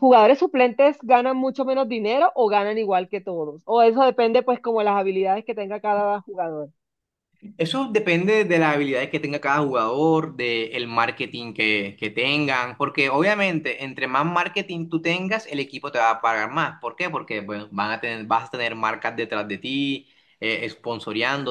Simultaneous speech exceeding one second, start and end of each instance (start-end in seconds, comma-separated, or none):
none